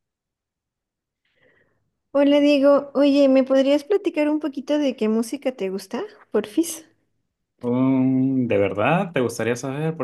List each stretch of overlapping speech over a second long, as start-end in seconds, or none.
none